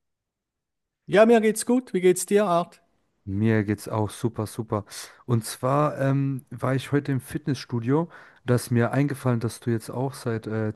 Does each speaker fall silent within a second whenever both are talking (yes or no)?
yes